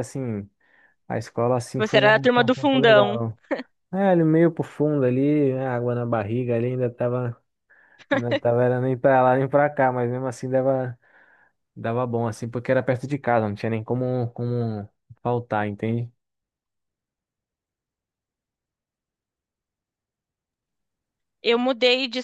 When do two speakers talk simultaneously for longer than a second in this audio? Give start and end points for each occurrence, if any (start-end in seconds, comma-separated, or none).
1.8-3.2